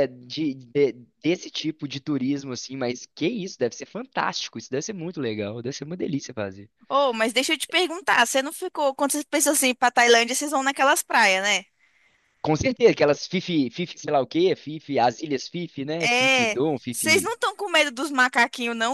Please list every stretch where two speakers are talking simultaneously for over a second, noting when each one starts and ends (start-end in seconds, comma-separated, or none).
16.0-17.3